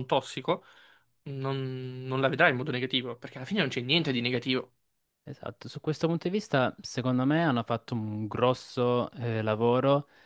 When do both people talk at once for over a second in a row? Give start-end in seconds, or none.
none